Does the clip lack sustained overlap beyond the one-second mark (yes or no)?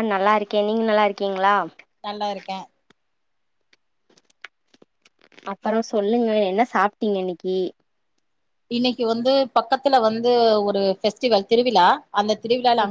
yes